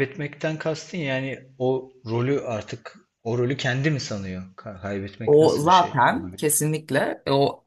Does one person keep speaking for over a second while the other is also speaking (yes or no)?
yes